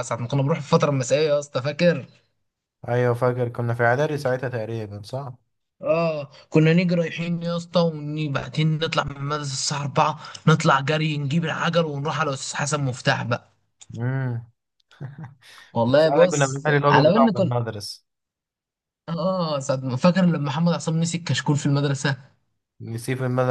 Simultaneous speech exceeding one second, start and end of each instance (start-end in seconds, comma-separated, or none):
16.0-17.5